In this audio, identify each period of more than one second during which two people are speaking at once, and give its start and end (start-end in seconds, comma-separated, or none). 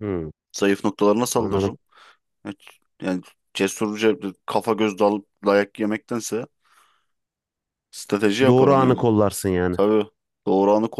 none